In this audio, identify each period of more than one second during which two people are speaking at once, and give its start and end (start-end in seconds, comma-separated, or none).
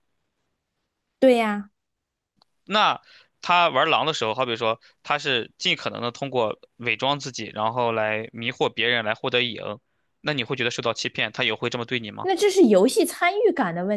none